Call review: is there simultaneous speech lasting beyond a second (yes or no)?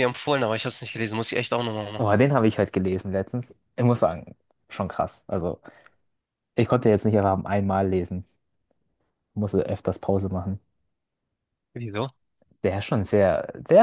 no